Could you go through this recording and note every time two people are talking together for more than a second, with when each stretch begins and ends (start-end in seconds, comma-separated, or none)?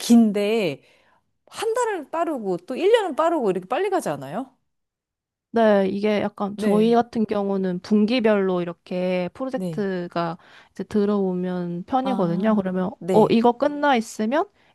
12.0-13.4